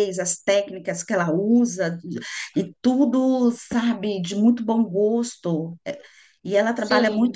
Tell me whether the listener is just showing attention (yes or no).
yes